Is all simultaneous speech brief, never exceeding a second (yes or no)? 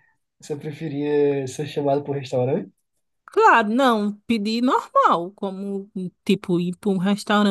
yes